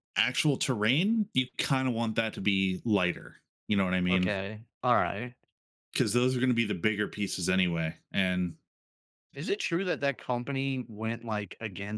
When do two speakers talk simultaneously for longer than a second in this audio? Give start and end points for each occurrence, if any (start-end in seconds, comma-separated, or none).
none